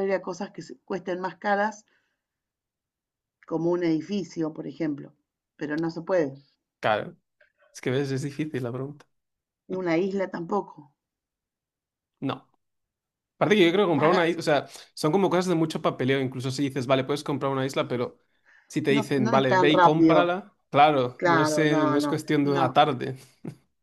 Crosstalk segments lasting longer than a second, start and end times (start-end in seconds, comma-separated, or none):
18.9-20.3, 21.2-22.7